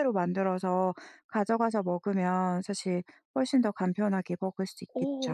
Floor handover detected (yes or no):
yes